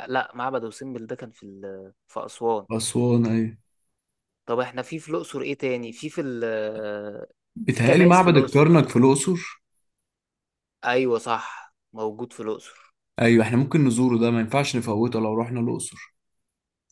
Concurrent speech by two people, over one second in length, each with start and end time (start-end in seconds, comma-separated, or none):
7.7-8.9